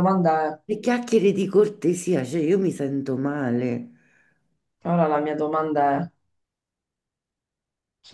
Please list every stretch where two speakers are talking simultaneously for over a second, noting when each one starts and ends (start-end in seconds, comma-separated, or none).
none